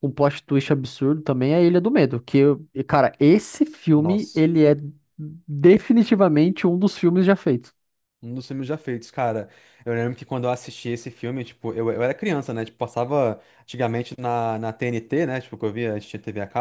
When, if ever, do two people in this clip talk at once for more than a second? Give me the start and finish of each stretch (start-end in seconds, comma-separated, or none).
none